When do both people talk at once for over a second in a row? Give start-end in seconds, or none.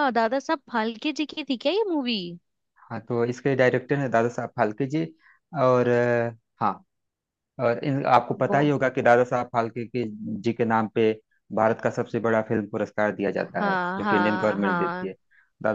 13.6-15.1